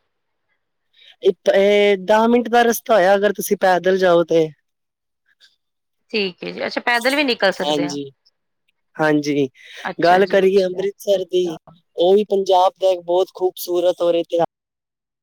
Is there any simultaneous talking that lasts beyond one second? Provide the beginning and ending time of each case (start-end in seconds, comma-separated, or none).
10.0-11.6